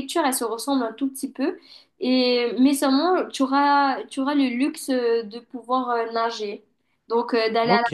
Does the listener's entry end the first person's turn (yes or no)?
yes